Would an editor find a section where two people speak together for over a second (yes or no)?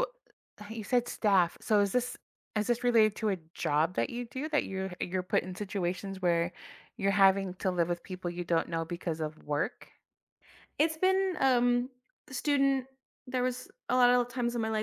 no